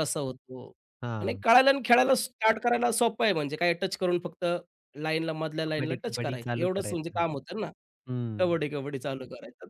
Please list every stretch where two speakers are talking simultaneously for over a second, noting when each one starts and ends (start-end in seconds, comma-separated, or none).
5.7-7.2